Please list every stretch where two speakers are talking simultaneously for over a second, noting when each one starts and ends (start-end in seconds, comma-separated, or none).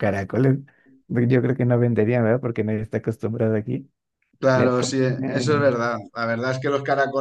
4.5-5.8